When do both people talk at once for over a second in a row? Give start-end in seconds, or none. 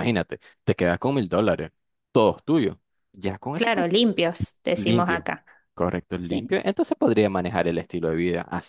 none